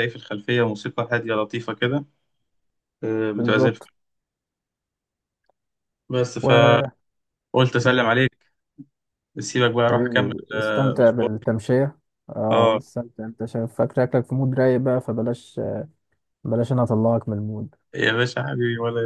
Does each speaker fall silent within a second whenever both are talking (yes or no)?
no